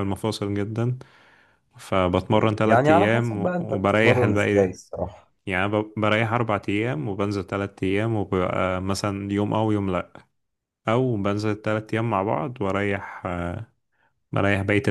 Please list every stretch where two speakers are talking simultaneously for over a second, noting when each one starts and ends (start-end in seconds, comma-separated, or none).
2.6-4.7